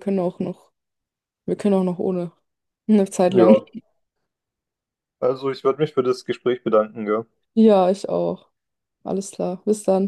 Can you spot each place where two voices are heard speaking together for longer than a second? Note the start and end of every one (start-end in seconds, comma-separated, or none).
none